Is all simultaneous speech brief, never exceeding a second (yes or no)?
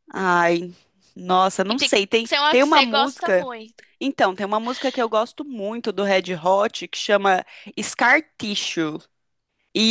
no